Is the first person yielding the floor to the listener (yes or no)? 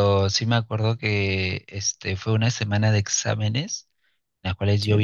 no